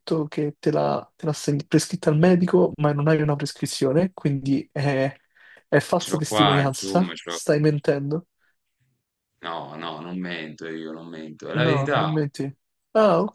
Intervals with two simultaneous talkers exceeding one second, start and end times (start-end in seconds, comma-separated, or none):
6.0-7.4